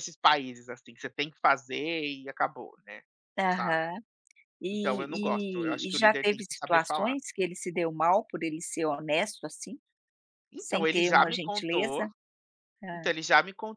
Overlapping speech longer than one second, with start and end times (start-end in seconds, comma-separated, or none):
4.7-7.2, 10.6-12.1